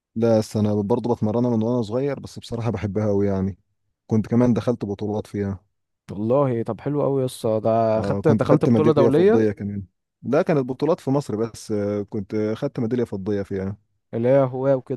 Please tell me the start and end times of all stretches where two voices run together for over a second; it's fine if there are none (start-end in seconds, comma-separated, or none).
8.0-9.4